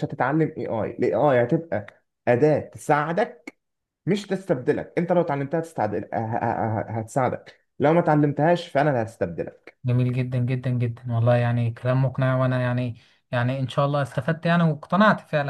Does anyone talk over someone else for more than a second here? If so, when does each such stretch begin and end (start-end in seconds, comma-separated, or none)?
none